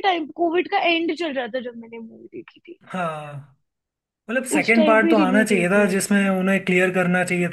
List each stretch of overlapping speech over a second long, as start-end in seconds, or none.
4.6-6.3